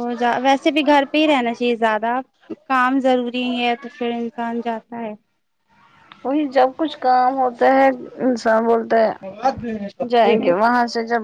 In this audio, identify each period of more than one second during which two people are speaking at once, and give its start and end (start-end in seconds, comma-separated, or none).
none